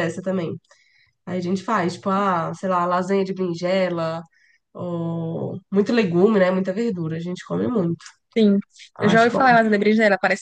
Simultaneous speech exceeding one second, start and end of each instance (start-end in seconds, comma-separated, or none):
none